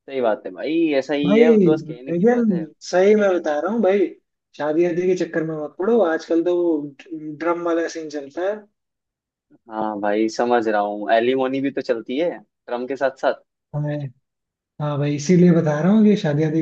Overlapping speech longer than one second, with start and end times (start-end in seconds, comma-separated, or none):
1.2-2.6